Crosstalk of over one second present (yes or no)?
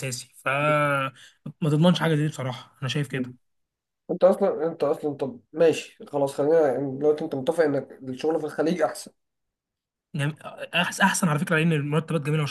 no